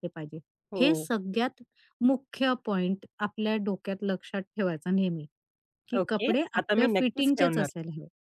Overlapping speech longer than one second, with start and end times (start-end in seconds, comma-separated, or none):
6.0-7.7